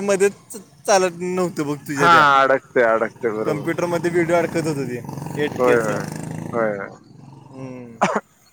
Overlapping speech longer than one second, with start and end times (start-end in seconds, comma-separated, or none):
none